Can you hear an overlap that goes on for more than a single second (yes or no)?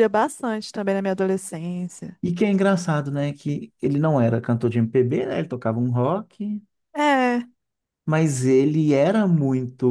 no